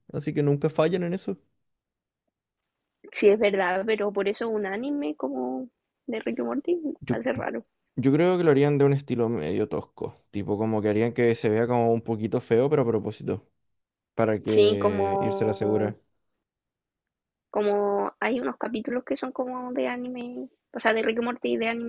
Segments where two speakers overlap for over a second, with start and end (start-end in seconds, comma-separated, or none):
14.5-16.0